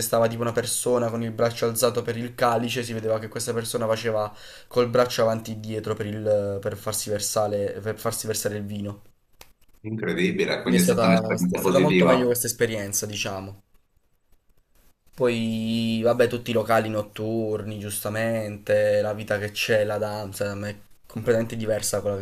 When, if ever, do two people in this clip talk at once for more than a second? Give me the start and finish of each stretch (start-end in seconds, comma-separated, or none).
10.6-12.3